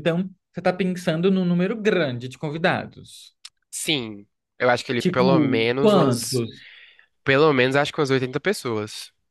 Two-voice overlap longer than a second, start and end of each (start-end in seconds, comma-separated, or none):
5.0-6.4